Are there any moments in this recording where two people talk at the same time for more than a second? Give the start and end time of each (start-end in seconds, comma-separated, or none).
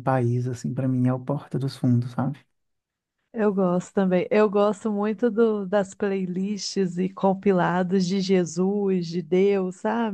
none